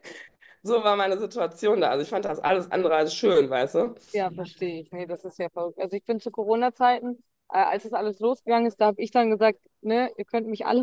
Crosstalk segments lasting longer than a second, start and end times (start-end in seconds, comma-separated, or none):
none